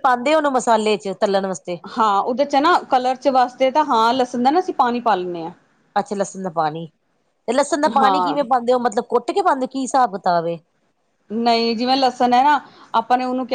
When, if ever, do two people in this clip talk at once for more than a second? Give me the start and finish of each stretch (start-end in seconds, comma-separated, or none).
none